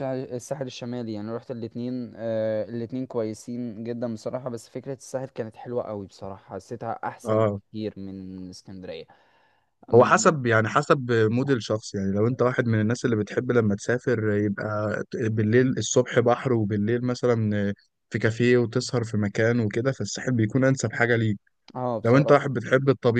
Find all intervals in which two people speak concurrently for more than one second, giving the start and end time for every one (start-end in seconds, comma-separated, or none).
none